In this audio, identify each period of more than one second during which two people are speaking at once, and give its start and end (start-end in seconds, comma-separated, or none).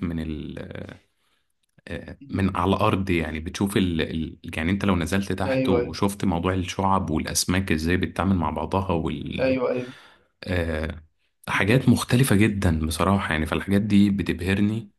none